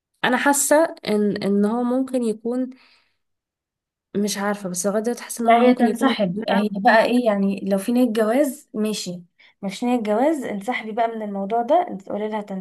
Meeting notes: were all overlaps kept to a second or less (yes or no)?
no